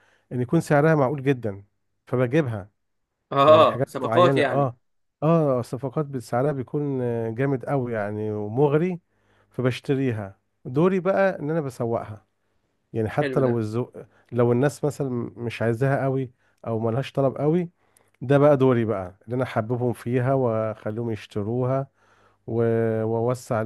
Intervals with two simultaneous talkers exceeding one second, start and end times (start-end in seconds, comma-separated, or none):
3.5-4.7